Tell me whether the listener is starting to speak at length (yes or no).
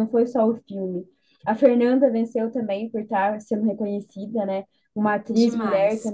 no